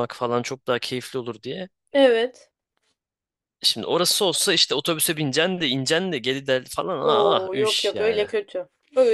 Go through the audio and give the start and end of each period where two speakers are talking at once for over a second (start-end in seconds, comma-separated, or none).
7.0-8.2